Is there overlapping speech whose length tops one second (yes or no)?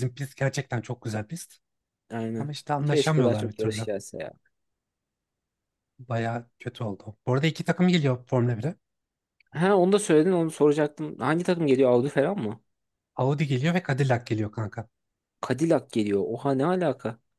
yes